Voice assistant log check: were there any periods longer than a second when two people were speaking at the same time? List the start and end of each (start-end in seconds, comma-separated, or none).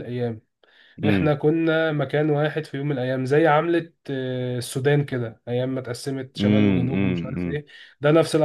6.4-7.6